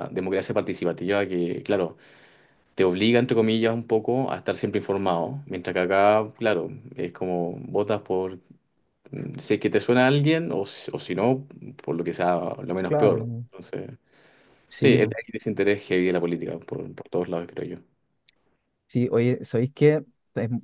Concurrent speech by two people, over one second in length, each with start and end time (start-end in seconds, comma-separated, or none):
none